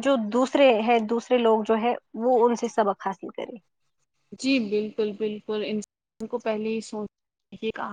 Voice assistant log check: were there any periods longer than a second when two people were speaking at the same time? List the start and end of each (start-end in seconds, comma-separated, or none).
none